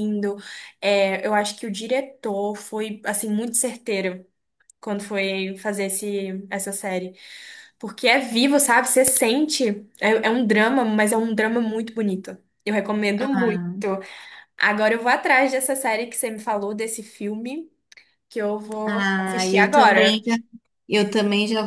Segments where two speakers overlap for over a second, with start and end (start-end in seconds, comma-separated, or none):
18.8-20.2